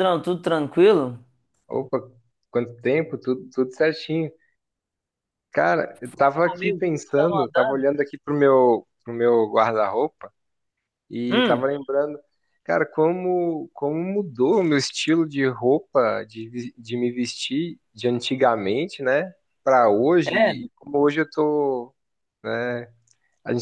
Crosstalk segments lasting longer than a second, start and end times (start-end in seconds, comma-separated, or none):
6.0-7.9